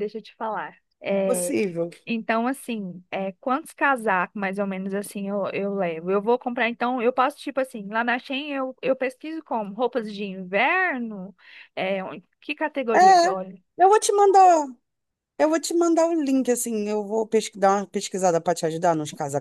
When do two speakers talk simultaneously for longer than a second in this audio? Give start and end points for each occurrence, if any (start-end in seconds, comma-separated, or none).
none